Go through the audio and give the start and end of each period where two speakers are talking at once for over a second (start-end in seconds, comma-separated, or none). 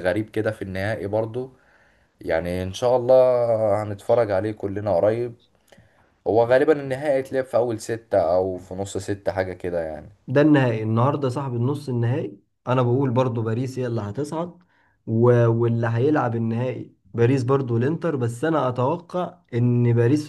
none